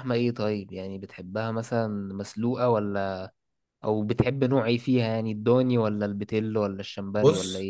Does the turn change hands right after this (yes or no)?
yes